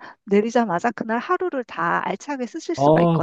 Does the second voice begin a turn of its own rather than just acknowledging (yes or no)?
yes